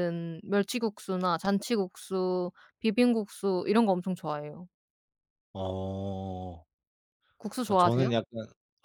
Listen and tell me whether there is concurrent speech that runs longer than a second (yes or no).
no